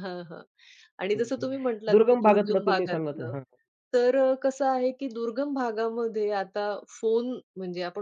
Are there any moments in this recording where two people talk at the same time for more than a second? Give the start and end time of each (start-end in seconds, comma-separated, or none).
1.9-3.3